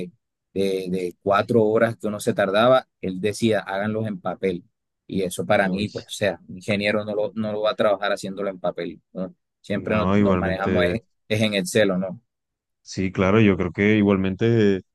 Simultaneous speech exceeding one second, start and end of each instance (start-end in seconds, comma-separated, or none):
9.7-11.0